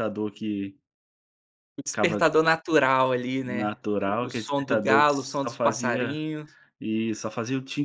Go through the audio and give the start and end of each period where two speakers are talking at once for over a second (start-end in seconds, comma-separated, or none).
3.4-6.2